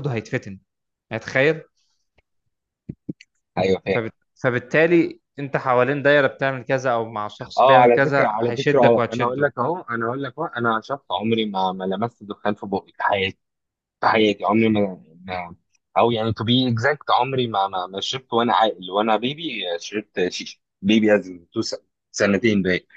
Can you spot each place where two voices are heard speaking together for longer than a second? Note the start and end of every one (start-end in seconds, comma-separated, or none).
7.6-9.5